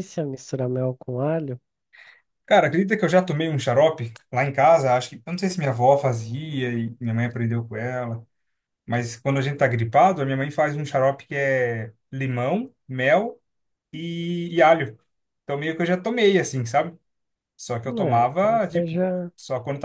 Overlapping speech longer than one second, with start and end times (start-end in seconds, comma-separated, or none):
17.8-19.3